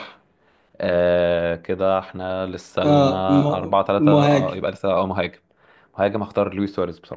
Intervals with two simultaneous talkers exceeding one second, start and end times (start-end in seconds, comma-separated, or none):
2.8-4.6